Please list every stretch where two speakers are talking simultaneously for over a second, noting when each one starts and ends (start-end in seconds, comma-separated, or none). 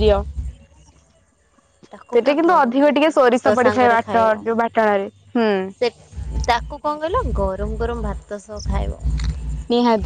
2.1-4.3